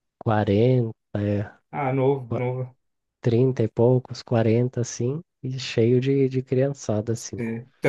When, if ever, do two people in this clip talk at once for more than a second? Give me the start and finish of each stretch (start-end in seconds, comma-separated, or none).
none